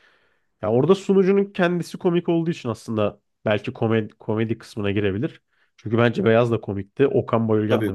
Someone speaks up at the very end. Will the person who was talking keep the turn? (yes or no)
no